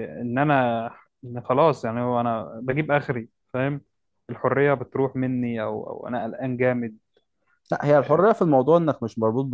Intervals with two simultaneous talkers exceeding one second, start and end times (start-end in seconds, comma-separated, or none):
none